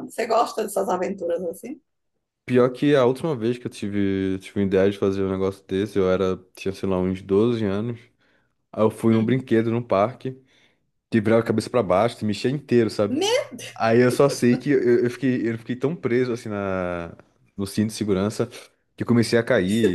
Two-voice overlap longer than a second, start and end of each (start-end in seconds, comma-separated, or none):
none